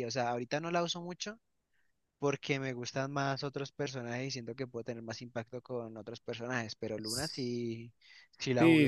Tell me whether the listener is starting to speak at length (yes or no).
yes